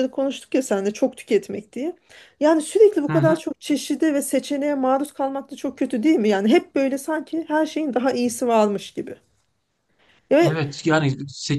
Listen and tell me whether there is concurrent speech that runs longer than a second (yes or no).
no